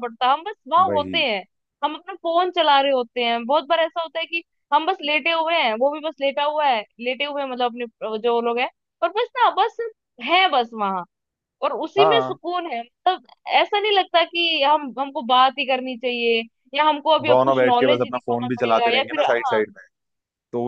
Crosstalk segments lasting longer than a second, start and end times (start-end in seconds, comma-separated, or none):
17.3-19.6